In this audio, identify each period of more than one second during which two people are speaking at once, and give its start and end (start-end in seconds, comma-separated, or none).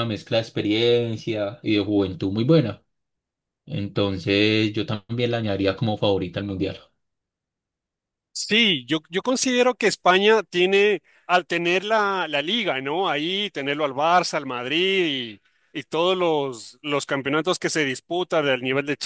none